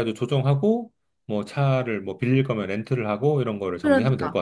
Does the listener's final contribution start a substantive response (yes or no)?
yes